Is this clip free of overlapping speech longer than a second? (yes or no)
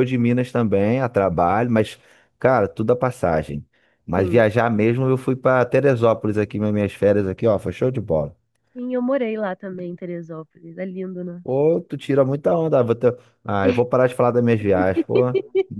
yes